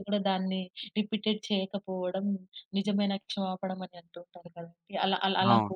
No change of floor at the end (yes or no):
yes